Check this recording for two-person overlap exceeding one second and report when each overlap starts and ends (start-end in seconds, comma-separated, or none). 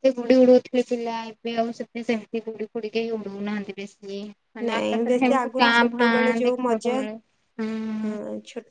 4.7-7.0